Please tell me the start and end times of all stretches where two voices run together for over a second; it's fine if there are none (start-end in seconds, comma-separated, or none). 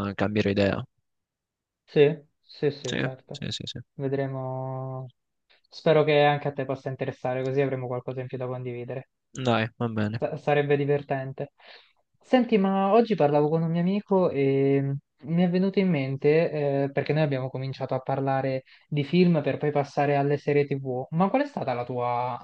none